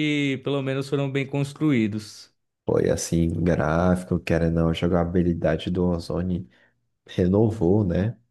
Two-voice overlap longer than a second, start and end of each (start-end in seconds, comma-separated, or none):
none